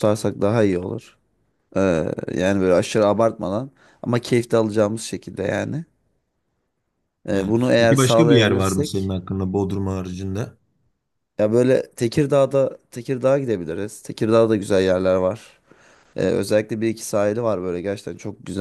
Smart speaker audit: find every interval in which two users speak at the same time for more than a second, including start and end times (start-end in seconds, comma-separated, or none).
7.3-9.1